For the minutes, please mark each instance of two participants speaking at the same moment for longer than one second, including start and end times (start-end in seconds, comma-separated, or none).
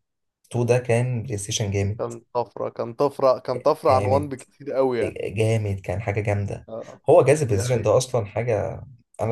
none